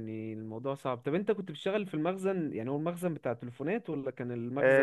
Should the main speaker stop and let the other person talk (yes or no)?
yes